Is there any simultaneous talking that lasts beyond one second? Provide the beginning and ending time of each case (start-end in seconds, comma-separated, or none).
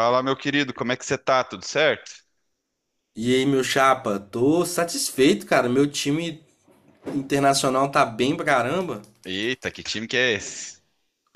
none